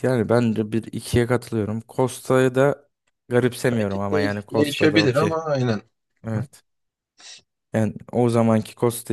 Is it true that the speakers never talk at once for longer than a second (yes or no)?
no